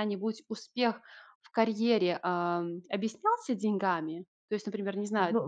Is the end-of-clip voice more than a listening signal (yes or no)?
yes